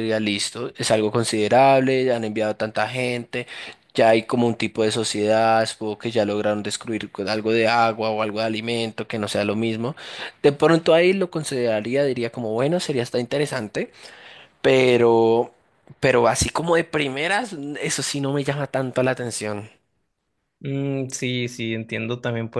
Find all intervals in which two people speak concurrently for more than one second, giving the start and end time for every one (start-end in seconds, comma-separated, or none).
none